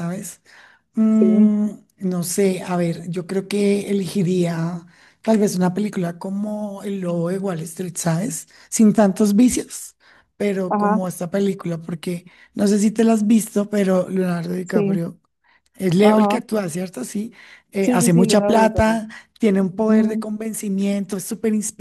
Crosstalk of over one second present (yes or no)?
yes